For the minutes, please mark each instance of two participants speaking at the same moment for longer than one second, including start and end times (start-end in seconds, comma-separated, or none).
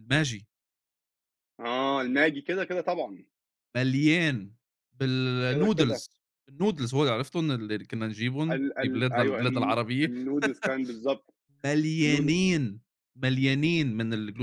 8.5-10.1